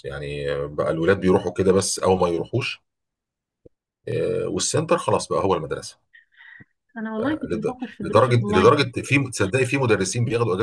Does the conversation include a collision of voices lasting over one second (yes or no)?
yes